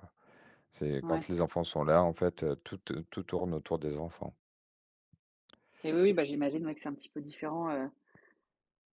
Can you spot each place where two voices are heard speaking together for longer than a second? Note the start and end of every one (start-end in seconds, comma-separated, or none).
none